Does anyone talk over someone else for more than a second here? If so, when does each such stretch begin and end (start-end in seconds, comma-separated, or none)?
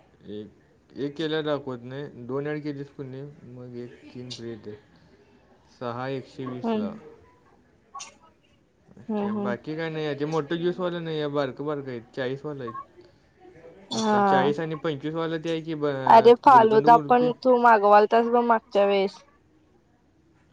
none